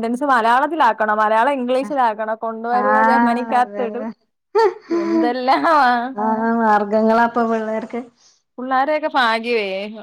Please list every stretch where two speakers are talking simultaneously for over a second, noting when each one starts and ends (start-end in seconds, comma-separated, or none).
2.8-4.0